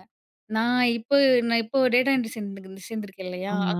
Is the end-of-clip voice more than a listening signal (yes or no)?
no